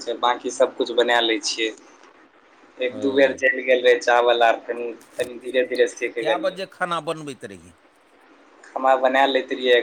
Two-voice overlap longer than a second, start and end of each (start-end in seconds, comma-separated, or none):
none